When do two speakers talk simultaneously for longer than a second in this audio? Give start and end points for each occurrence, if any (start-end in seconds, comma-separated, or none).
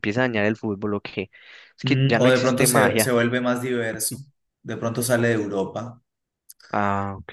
1.8-3.1